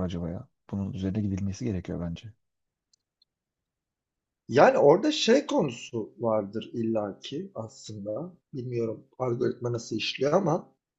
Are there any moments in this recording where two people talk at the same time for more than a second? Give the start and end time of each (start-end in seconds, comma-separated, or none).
none